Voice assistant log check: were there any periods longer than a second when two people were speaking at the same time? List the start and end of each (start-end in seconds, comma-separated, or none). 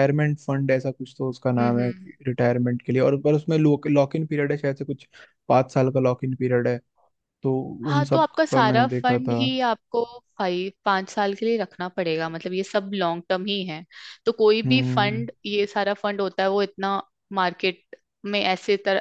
7.8-9.4